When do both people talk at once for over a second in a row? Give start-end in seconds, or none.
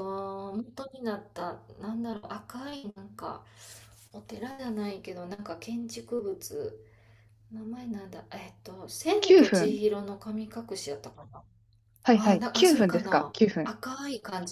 12.1-13.7